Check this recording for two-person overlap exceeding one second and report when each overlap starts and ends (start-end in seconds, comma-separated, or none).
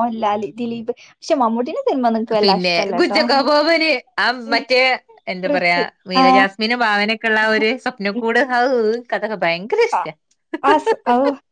none